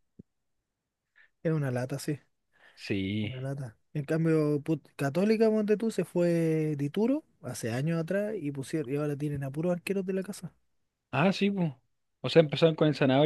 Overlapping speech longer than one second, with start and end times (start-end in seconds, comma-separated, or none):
none